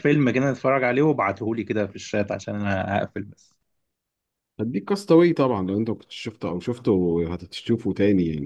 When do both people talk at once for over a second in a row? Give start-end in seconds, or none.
none